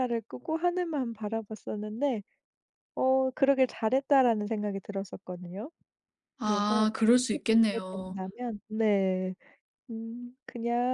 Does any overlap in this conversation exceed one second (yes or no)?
yes